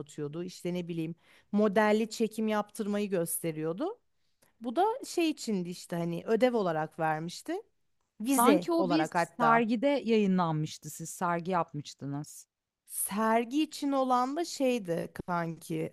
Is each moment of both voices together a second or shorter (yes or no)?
no